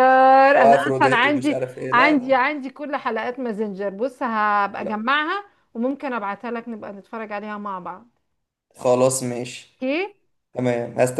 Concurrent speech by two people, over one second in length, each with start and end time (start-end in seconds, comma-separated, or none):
0.6-2.4